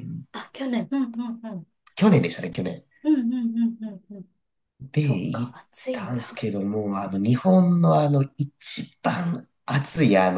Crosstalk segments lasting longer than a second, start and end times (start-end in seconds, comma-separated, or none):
5.0-6.5